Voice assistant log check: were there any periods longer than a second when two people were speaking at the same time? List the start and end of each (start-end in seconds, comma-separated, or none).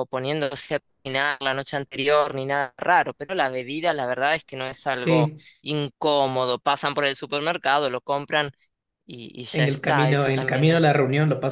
9.5-10.9